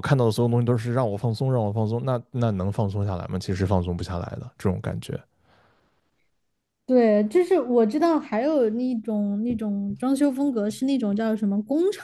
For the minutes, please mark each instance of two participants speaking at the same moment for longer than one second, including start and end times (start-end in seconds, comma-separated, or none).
none